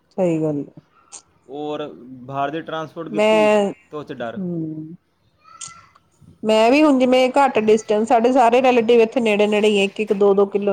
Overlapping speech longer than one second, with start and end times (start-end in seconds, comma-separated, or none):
none